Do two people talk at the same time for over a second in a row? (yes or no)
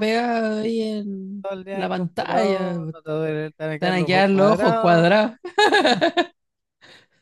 yes